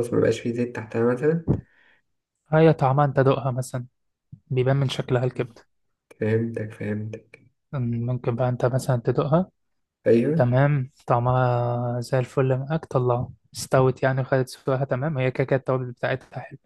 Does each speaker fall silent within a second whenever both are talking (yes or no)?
yes